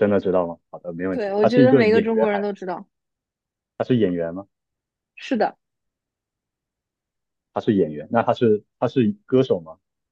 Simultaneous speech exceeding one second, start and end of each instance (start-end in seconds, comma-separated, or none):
1.1-2.4